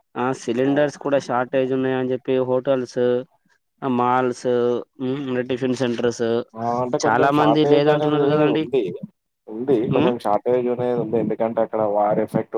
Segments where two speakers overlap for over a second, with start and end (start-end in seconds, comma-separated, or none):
7.0-8.6